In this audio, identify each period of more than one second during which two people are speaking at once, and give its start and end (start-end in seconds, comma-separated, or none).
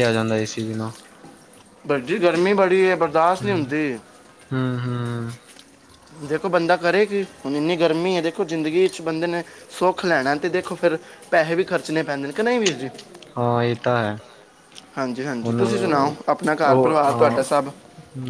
15.4-17.4